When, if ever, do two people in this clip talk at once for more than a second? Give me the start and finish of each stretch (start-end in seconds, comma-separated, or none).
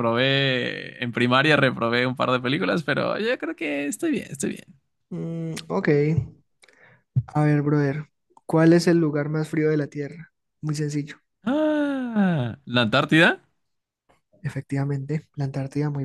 none